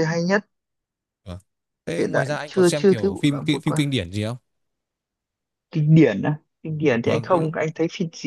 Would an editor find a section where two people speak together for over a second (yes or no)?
yes